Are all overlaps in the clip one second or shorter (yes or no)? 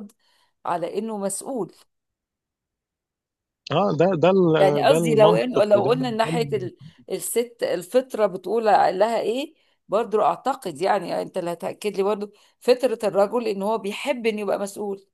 no